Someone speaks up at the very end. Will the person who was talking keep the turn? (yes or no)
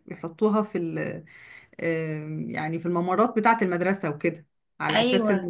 yes